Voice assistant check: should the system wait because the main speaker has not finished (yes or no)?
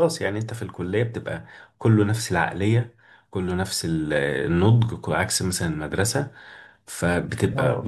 yes